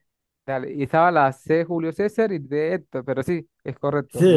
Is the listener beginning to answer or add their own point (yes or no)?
yes